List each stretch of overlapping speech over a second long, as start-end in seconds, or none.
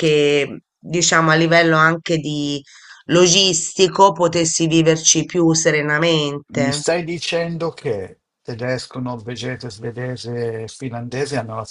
none